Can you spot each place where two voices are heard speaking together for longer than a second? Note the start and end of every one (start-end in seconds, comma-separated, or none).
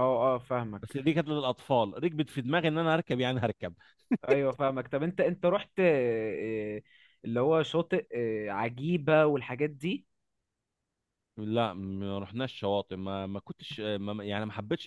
none